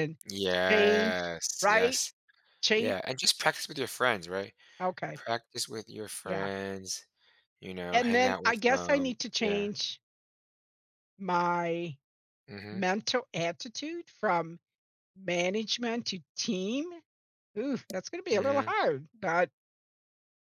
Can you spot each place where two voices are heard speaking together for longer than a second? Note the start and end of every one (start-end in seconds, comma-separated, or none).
0.7-2.0, 7.9-9.7